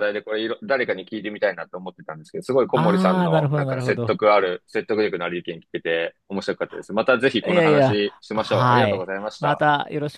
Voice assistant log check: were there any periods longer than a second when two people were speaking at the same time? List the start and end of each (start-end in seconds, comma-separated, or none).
2.7-4.2, 7.4-9.6